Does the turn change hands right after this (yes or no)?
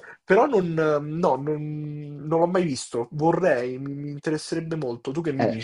yes